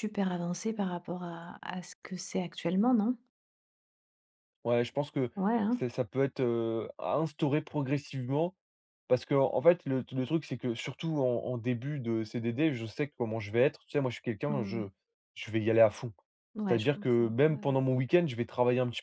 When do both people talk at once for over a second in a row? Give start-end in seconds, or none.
16.7-17.9